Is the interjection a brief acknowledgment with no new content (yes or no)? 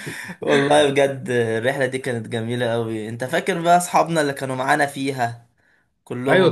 no